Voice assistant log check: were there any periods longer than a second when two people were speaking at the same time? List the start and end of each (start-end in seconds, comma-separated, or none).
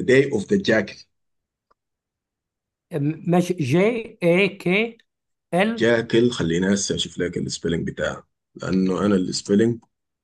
none